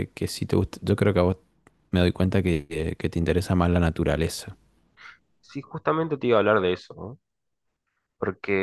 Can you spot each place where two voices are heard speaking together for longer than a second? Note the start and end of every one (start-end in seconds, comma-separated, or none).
none